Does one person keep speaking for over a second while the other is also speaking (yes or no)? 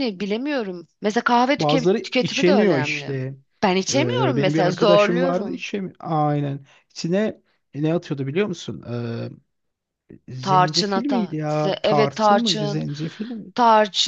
yes